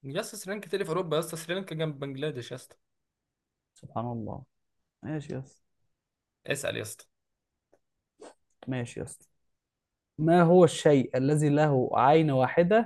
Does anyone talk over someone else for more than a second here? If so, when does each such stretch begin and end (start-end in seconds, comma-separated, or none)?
none